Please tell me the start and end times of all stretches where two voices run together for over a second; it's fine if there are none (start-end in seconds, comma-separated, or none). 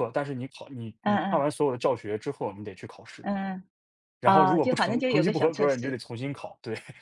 4.2-6.0